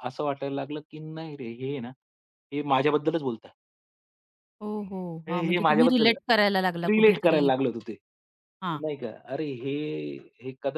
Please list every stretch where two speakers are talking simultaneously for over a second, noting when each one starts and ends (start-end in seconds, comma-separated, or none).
5.3-7.5